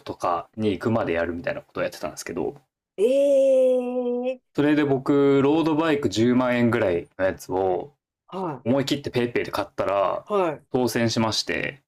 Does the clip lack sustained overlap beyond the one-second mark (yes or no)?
yes